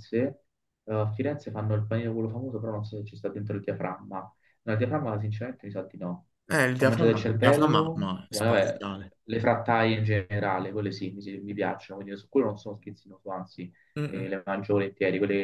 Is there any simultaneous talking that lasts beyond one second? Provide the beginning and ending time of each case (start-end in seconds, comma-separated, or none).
6.8-8.9